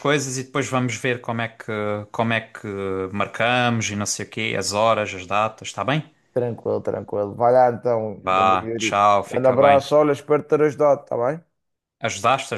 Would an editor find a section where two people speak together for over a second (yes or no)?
yes